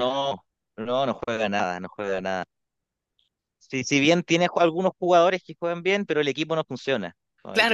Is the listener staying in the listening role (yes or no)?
no